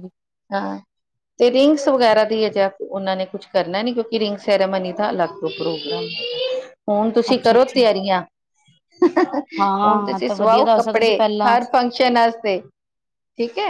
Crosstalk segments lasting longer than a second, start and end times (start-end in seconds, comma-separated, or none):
9.8-11.6